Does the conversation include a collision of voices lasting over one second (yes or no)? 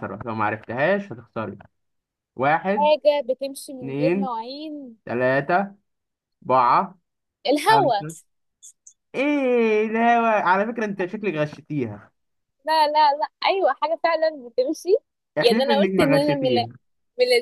yes